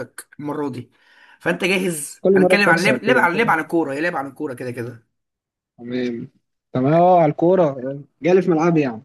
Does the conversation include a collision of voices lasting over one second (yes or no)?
yes